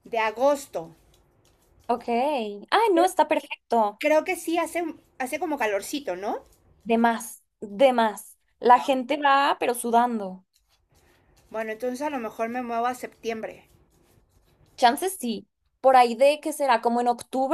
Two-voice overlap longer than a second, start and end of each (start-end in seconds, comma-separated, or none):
none